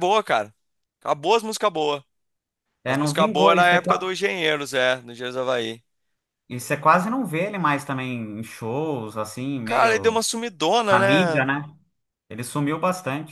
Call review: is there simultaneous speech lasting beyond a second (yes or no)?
yes